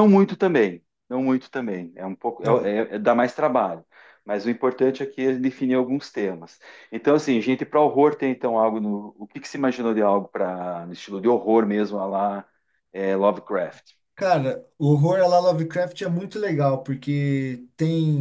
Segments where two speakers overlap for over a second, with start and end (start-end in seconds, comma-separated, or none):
none